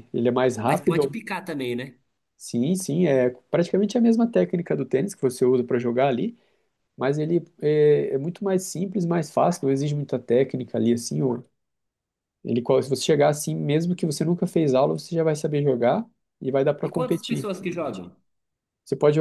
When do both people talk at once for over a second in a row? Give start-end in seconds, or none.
16.8-18.1